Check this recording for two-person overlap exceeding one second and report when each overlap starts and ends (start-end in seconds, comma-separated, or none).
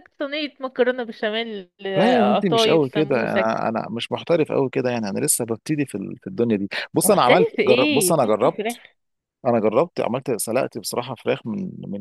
1.9-3.5, 7.0-8.8